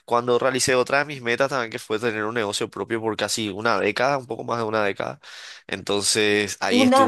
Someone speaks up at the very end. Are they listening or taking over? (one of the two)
taking over